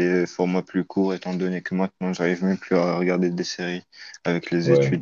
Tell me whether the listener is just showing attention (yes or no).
no